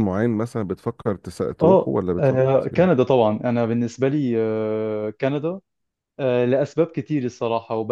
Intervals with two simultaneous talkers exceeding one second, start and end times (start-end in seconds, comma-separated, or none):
1.6-3.0